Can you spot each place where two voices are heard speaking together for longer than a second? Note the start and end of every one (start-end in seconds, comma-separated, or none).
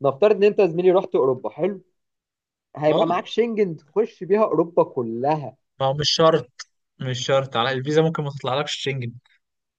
none